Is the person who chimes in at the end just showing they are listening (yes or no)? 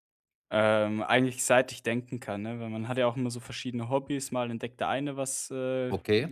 yes